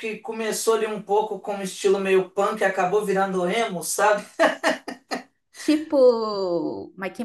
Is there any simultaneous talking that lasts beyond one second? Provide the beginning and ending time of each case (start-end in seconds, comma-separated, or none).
none